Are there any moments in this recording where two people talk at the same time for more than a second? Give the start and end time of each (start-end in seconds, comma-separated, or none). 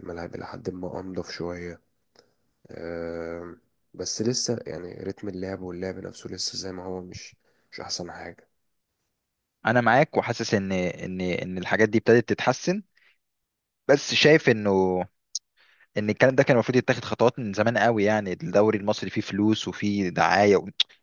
none